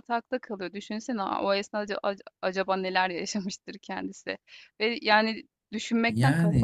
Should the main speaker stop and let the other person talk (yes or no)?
no